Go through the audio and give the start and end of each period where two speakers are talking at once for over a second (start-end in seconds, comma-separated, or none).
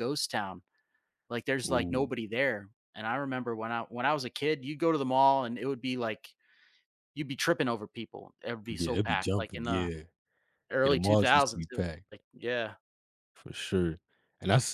8.7-9.9, 10.8-12.0